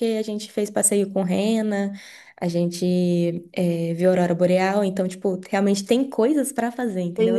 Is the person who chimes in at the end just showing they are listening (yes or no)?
no